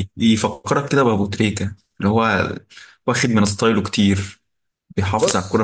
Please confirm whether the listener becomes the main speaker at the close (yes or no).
no